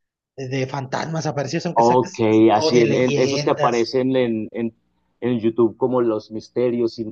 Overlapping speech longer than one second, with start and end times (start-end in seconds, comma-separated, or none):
1.7-3.9